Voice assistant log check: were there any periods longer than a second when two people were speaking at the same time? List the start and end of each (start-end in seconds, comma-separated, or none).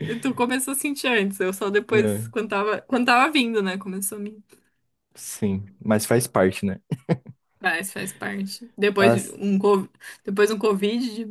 none